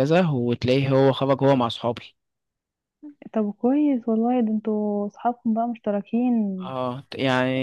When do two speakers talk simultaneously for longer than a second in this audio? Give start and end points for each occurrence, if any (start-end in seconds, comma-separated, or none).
none